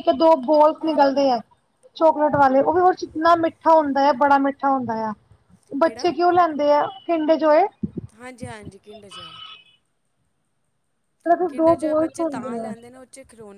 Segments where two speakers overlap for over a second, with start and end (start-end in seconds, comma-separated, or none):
11.5-12.7